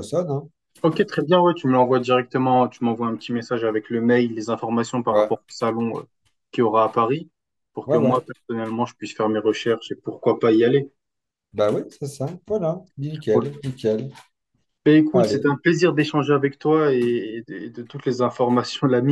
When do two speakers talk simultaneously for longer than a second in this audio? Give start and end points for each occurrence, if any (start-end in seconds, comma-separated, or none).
none